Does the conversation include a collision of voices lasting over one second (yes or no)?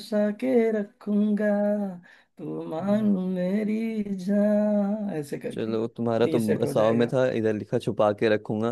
yes